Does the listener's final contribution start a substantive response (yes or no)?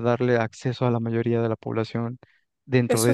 yes